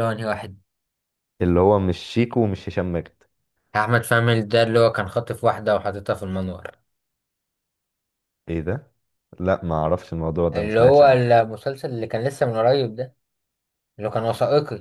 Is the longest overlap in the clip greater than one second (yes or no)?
no